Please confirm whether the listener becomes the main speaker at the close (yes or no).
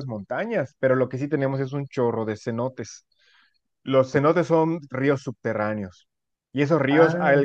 no